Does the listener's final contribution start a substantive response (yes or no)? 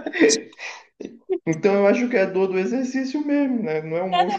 yes